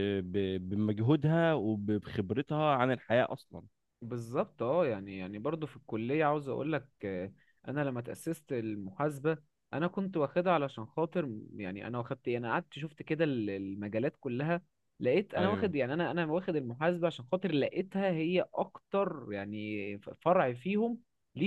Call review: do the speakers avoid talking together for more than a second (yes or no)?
yes